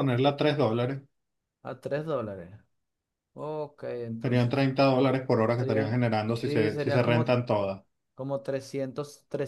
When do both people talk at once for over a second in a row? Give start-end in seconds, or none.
5.6-7.4